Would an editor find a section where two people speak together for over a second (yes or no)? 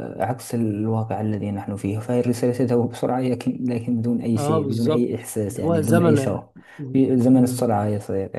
yes